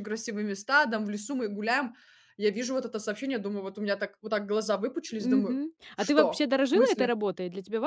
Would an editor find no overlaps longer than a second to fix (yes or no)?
no